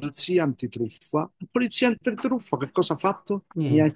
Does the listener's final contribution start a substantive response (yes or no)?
no